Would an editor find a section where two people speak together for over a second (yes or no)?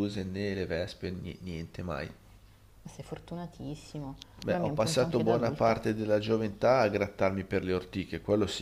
yes